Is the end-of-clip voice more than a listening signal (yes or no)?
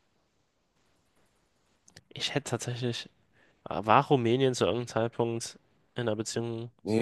yes